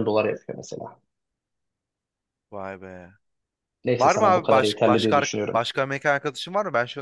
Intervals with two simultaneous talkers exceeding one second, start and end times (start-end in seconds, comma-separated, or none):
4.0-5.6